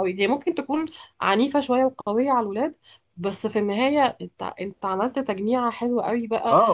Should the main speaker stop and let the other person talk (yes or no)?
yes